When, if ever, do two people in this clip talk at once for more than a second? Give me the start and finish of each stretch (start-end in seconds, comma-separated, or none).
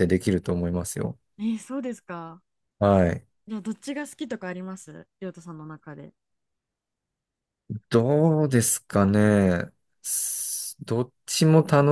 none